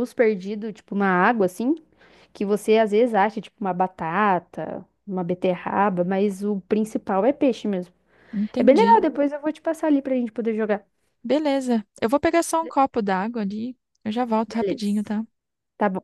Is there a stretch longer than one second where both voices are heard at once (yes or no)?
no